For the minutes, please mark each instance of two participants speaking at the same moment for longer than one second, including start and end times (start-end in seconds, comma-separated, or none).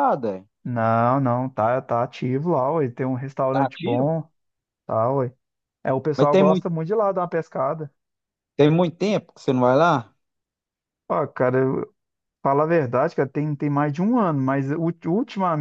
none